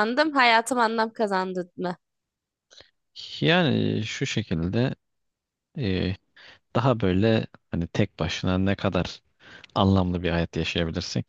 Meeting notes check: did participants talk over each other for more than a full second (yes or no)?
no